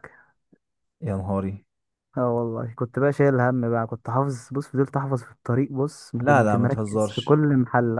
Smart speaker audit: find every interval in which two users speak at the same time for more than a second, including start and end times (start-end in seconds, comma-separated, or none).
6.2-7.4